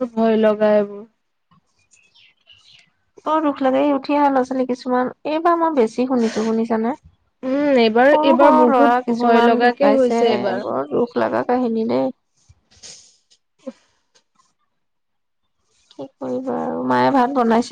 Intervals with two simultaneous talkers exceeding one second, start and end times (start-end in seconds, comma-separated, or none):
7.5-10.2